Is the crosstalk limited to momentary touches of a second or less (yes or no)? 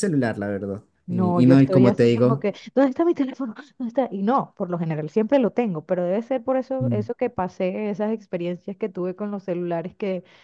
no